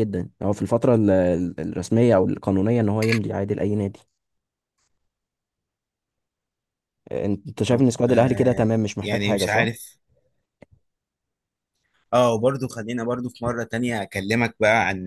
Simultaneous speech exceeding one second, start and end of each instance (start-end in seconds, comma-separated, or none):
7.7-9.7